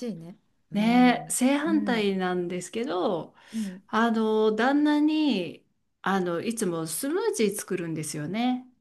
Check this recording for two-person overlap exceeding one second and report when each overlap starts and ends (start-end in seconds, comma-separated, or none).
0.7-2.1